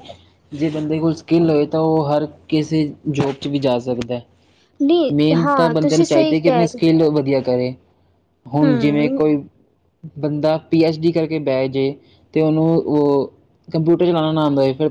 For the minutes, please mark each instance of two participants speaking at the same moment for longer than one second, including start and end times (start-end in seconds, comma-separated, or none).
5.1-6.8